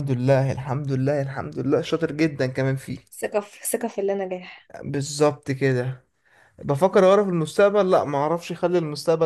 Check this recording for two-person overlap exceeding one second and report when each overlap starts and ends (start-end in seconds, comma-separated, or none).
none